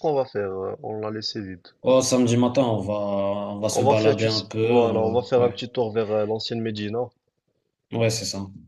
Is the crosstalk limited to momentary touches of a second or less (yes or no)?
no